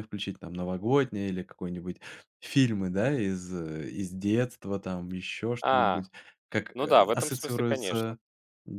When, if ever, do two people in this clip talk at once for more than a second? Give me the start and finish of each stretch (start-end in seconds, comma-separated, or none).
6.7-8.1